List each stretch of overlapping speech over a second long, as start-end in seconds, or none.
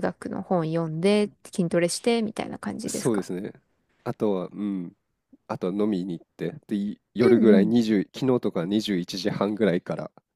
none